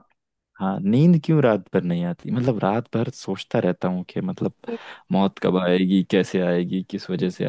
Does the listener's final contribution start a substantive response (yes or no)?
no